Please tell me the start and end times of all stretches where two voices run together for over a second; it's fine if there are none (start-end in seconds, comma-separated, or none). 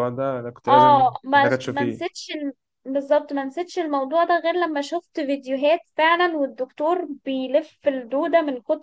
0.7-2.2